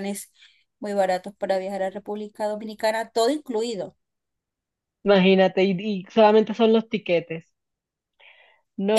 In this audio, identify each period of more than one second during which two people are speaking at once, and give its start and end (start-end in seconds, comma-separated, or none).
none